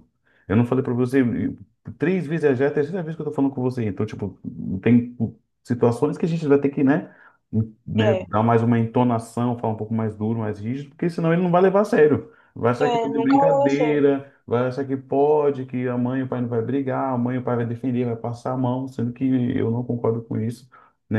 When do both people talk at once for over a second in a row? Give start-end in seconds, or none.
12.8-14.0